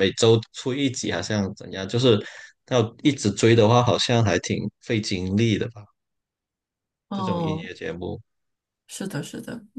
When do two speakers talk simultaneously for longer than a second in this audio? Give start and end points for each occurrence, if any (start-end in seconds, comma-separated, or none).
none